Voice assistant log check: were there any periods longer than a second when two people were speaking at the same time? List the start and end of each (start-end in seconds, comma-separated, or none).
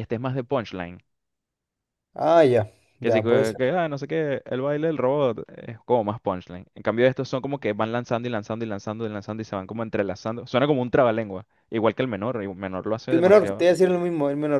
none